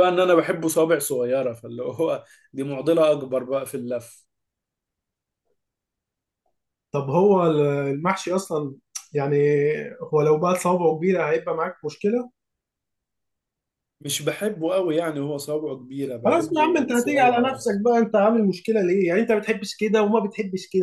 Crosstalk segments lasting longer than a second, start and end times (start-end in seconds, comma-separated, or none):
16.2-17.8